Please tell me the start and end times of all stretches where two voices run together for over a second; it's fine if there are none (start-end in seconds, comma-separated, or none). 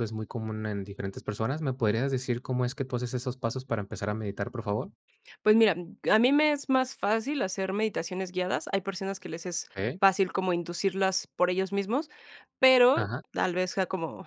none